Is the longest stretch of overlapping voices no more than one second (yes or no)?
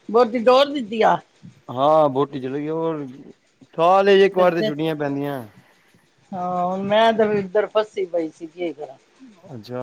yes